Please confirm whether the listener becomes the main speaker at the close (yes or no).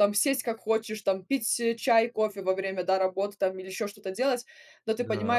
no